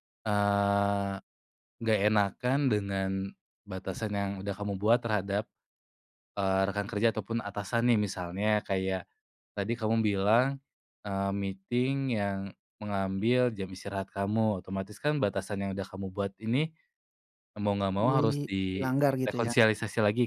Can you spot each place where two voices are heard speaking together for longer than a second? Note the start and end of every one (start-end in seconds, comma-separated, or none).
18.0-19.5